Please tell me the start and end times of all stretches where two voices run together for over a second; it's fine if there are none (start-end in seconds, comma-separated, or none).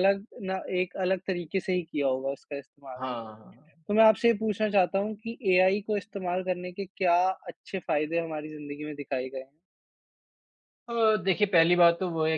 none